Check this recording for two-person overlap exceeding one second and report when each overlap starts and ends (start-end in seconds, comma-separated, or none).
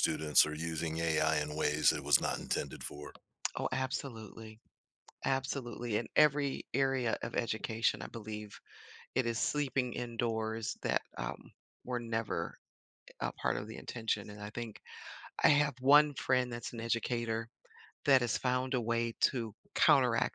none